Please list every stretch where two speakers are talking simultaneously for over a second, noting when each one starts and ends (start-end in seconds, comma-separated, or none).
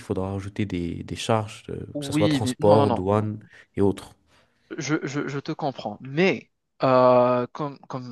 1.9-3.3